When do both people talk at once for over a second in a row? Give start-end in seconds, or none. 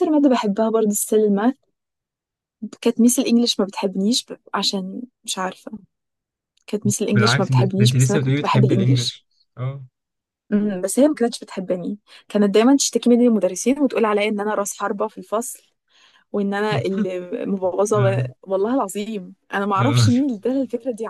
7.1-9.2